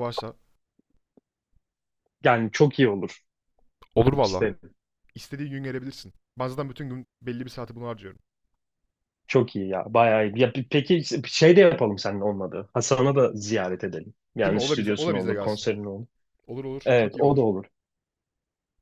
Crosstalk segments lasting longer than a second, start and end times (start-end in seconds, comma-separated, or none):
14.4-15.7